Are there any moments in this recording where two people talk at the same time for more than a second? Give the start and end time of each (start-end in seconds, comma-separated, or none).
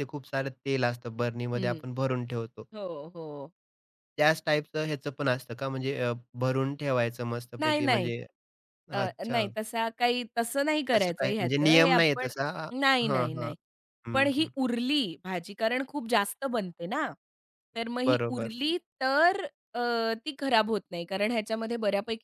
10.9-12.3